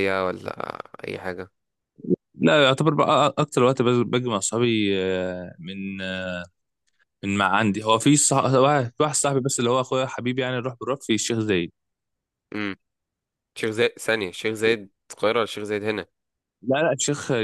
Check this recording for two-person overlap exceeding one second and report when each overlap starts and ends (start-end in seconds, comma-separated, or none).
none